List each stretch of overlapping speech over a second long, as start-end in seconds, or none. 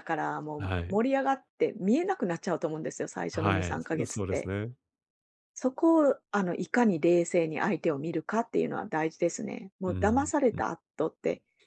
3.3-4.5